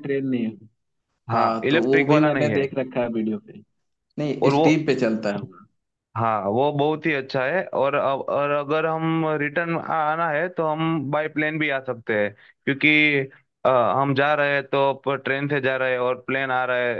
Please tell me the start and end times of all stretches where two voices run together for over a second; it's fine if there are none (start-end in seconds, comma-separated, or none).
1.3-2.6